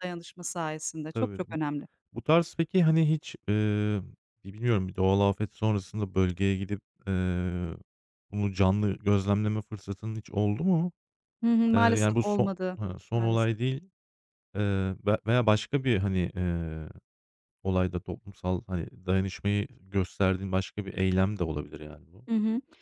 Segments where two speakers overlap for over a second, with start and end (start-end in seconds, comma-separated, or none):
11.7-13.6